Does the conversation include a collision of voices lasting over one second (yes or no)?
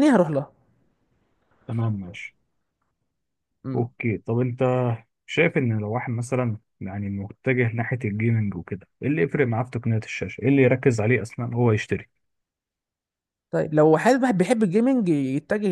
no